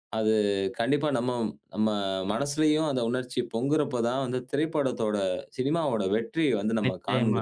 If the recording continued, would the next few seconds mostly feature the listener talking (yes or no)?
yes